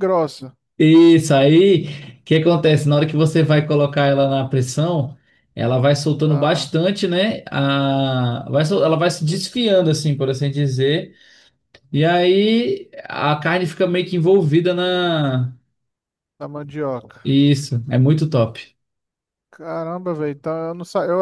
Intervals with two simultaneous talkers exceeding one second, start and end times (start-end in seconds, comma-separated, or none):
none